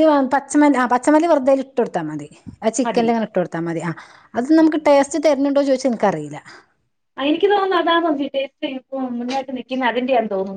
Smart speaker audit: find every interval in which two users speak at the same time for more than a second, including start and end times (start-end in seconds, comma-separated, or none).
none